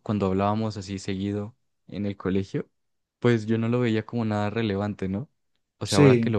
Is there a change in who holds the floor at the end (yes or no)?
no